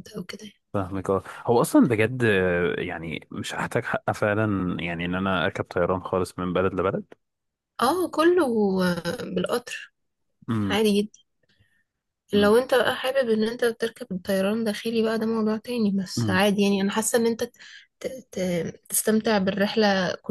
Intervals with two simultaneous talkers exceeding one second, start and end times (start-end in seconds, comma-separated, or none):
none